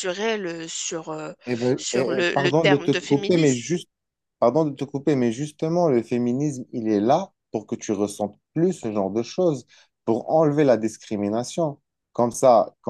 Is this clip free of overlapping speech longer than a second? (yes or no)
no